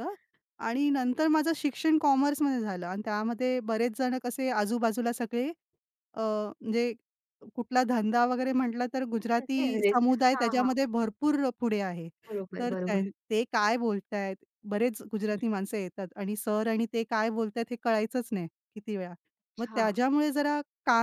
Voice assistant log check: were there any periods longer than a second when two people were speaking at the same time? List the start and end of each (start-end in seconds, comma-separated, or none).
9.1-10.7